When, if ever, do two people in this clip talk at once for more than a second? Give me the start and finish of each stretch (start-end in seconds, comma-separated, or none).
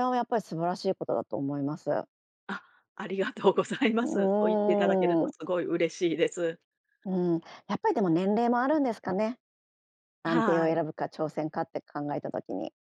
4.0-5.3